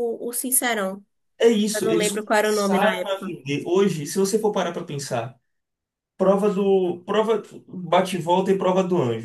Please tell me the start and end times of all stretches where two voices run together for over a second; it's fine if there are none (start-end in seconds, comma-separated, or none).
1.8-3.3